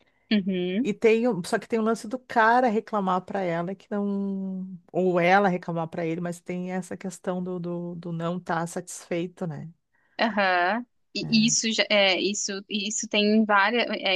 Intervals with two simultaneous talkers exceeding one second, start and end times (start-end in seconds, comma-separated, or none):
none